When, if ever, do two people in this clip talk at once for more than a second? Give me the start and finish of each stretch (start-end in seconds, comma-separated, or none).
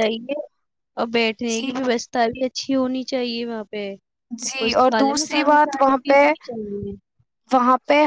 4.4-6.2